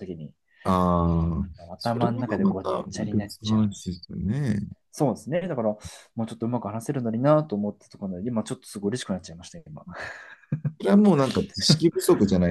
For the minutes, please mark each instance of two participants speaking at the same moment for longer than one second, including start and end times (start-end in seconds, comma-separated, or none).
1.7-3.9